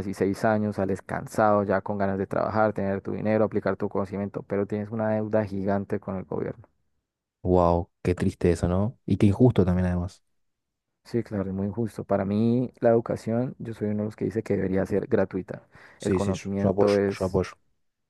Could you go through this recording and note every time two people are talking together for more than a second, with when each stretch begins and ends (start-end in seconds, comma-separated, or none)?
16.0-17.4